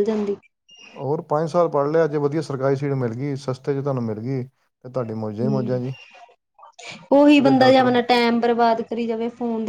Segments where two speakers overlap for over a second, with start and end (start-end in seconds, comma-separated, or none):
none